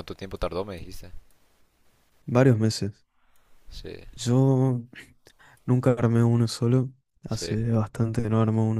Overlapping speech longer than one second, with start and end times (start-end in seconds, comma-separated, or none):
none